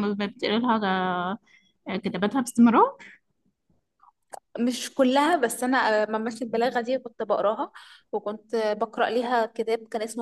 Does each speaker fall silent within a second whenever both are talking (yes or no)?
yes